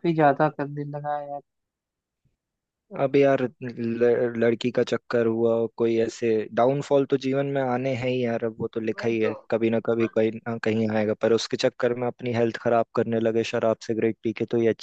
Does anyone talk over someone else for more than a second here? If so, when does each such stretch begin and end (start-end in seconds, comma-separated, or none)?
none